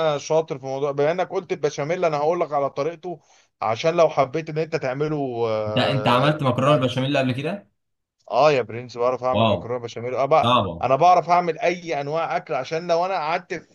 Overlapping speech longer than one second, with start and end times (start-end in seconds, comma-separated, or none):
5.7-6.9